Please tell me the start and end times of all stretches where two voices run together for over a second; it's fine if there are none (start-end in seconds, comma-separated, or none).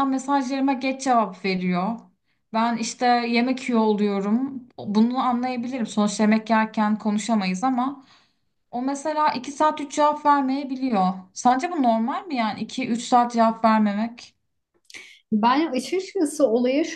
none